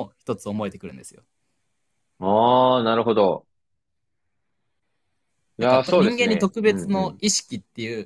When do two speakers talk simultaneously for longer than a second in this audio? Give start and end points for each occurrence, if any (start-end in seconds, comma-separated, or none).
5.6-7.2